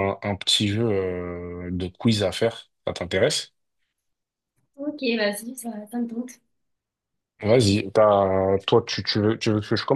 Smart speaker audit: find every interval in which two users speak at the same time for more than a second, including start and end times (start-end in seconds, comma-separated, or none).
none